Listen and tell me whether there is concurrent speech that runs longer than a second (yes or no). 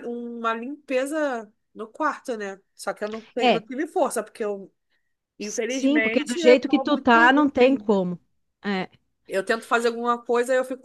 yes